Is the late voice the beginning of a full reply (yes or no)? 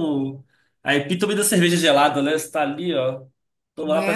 yes